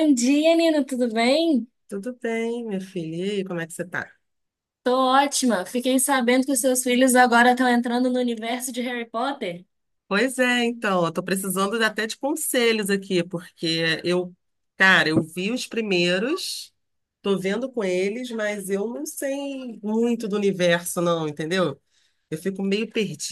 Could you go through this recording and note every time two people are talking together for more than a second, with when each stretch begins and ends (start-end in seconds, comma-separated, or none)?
none